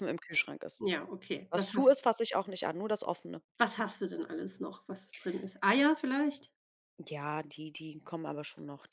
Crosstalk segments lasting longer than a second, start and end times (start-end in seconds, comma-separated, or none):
none